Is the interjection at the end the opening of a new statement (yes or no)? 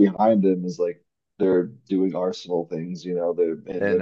no